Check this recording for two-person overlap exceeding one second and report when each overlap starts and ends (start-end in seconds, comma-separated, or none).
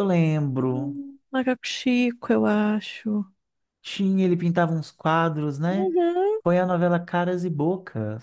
none